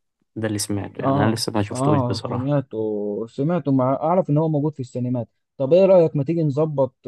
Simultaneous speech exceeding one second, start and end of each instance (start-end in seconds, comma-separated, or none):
1.0-2.7